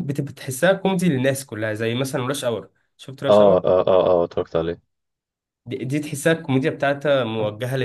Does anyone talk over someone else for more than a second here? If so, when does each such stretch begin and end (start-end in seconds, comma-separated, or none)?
none